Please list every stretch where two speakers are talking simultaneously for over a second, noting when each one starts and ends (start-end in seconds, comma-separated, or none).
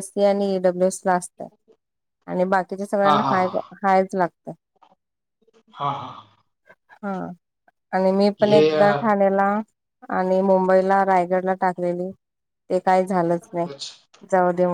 none